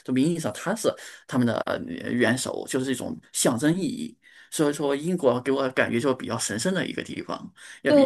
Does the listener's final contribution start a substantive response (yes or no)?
yes